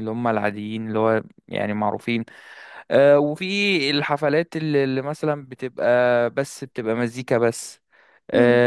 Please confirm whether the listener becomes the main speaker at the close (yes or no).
no